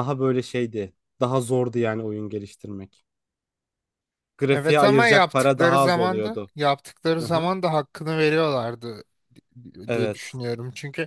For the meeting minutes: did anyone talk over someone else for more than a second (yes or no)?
yes